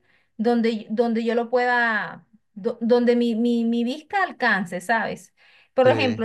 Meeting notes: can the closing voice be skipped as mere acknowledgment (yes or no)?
yes